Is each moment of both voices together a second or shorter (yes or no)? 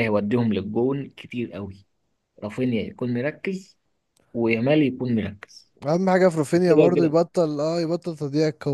yes